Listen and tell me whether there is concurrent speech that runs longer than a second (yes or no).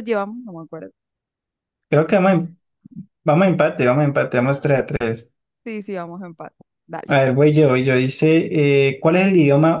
no